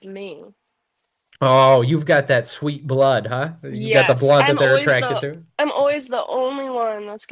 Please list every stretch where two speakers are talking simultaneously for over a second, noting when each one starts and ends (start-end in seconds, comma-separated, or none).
3.7-5.4